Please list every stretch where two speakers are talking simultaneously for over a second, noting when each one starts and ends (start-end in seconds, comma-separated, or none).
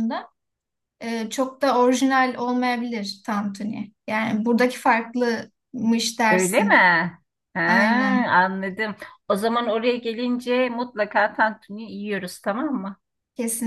none